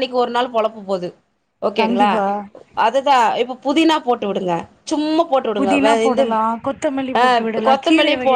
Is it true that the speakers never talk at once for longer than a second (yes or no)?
yes